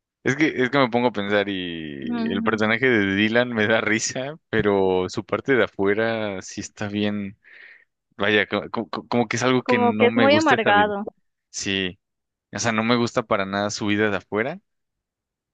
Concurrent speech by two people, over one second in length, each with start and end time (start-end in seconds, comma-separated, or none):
9.6-10.9